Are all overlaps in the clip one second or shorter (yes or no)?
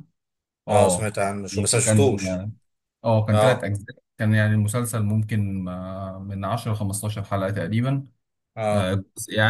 no